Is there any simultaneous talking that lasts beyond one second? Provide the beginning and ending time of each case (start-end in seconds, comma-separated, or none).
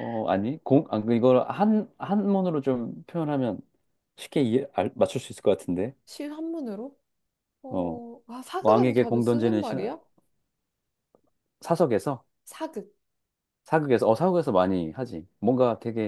8.6-9.8